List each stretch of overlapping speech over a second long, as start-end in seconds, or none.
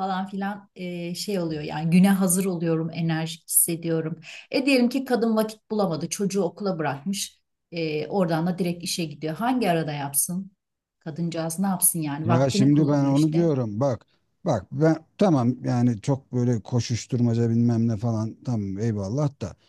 12.2-13.5